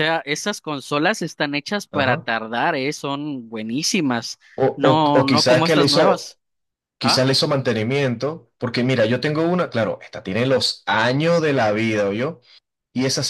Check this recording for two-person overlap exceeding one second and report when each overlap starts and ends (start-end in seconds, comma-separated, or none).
4.7-6.3